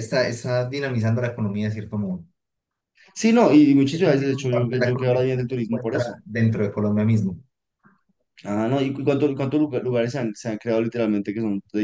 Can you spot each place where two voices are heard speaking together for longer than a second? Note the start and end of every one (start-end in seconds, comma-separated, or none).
3.9-6.2